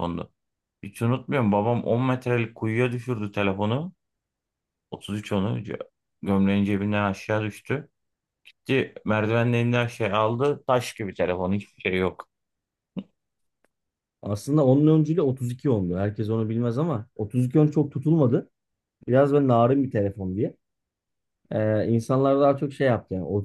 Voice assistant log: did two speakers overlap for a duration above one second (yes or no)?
no